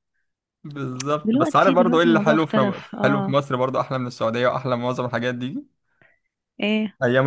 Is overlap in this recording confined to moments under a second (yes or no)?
no